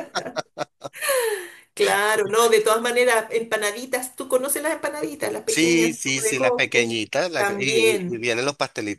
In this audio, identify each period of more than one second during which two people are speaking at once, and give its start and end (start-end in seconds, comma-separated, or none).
5.5-8.3